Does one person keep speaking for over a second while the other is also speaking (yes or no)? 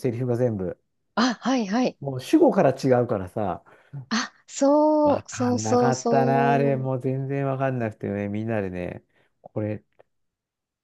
yes